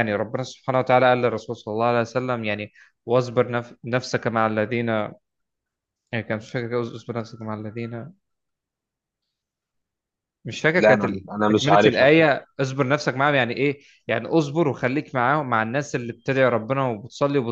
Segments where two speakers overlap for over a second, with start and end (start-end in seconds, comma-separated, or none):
10.8-12.3